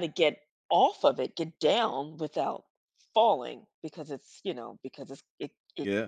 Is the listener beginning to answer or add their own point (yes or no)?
no